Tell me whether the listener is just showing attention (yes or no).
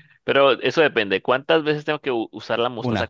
yes